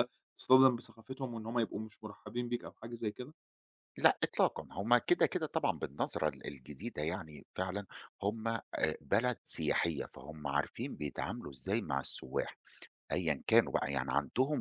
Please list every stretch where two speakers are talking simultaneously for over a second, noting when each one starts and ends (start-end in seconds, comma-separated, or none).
none